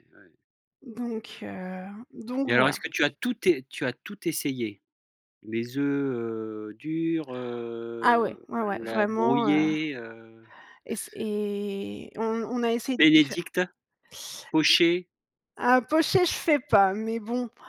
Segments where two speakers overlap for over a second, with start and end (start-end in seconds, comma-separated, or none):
8.0-9.7